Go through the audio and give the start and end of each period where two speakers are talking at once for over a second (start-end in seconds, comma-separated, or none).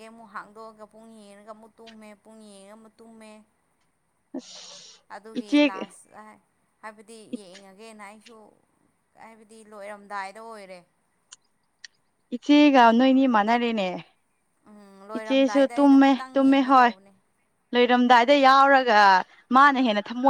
15.2-16.9